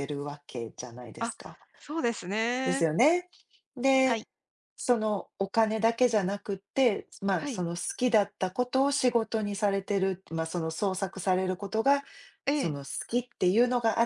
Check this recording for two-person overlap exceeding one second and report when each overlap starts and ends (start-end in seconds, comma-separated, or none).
none